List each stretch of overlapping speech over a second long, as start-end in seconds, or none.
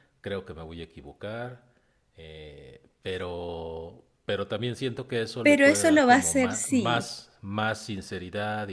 5.4-7.2